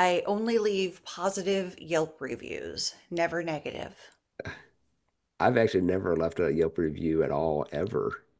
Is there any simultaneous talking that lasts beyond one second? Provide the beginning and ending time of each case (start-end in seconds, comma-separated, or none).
none